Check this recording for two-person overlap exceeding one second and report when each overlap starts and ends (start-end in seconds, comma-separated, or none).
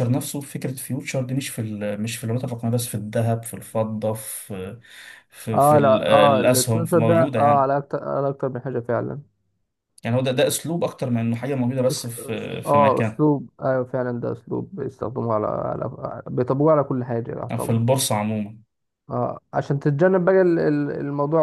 5.5-7.7, 11.9-13.2